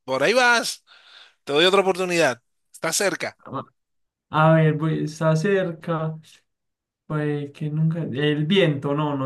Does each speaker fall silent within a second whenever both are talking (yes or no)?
yes